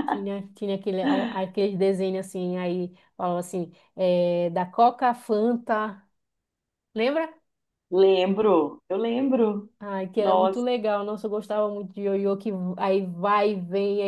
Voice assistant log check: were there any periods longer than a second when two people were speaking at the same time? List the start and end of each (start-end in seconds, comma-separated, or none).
none